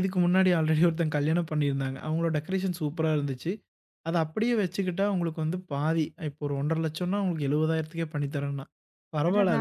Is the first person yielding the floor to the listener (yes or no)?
no